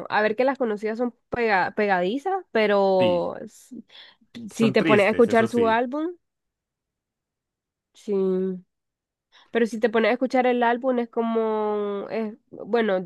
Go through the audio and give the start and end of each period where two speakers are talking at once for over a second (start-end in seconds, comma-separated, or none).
4.5-5.8